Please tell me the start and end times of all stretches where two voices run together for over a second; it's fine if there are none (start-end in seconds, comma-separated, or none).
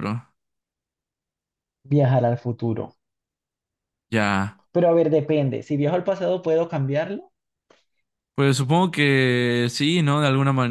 none